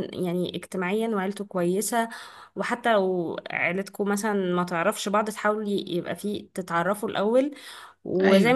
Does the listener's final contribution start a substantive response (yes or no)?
no